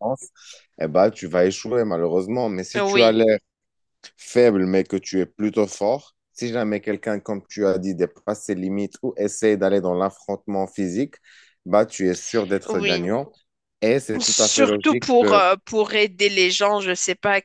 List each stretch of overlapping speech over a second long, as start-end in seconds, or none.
14.2-15.4